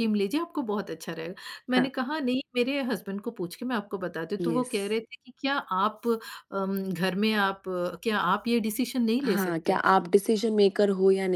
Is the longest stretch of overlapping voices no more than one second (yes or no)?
yes